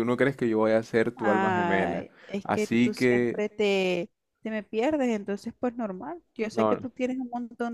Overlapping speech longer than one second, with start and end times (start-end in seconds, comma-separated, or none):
1.1-3.4